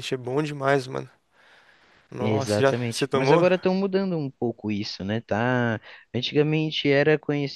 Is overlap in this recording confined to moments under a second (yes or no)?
no